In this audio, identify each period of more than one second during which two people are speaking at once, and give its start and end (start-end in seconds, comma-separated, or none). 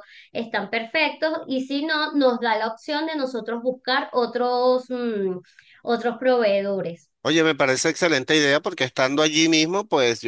none